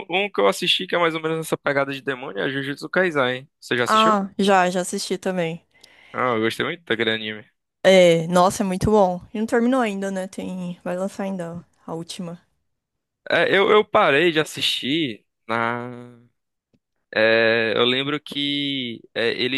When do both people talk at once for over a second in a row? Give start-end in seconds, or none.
none